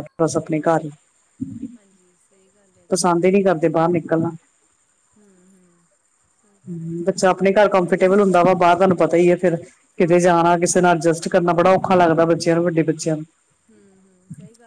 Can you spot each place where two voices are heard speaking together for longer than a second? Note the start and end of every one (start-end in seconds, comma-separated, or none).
6.7-8.3